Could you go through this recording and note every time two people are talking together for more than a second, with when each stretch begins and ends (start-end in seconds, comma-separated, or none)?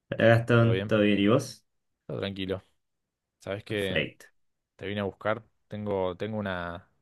none